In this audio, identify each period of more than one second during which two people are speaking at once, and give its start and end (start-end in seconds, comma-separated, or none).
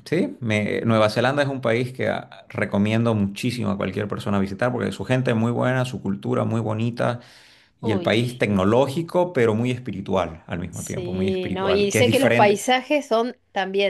10.7-12.6